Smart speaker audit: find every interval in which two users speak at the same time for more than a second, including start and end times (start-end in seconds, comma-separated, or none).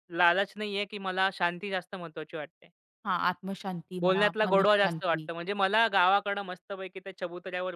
4.0-5.3